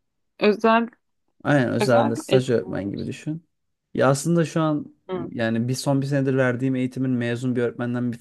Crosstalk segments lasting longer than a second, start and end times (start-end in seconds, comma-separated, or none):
1.8-3.1